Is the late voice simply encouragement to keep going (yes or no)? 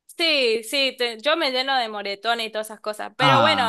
yes